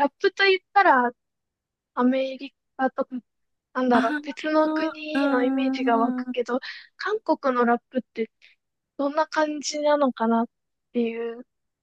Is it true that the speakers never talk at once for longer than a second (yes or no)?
no